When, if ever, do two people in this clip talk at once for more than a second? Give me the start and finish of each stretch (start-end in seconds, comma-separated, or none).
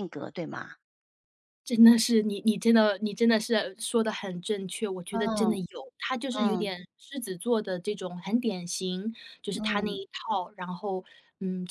none